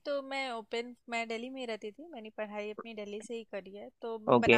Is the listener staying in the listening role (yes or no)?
yes